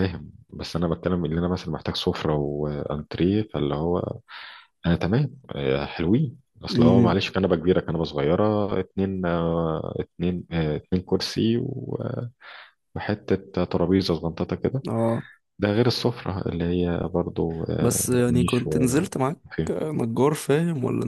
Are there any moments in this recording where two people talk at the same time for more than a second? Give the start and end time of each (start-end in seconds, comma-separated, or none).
17.8-19.2